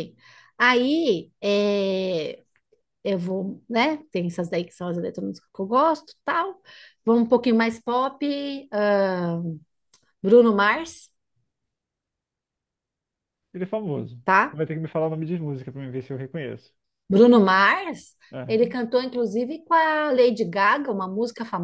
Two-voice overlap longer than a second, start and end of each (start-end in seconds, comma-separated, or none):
none